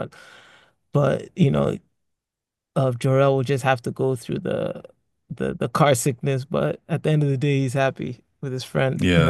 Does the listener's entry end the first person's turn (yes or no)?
yes